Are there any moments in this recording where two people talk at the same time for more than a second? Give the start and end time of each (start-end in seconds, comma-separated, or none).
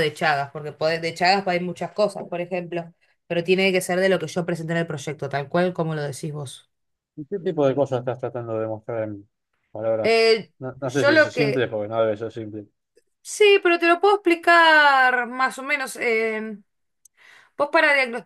10.0-11.7